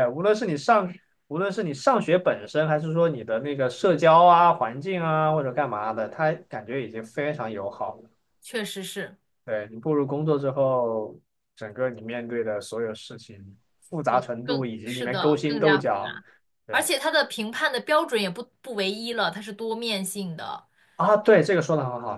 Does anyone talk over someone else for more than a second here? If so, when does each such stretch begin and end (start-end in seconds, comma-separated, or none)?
14.1-16.1